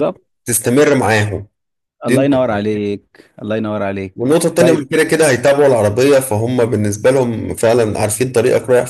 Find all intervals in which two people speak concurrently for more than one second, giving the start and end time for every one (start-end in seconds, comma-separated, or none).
none